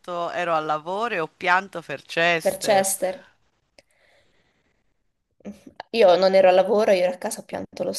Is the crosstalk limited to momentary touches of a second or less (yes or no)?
yes